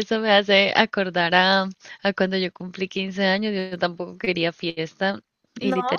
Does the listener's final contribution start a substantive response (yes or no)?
no